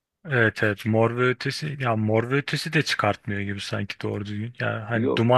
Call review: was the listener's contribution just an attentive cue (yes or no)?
yes